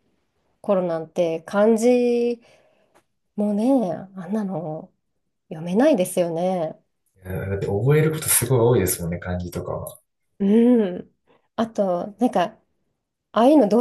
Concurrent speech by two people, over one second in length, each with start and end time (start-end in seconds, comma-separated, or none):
none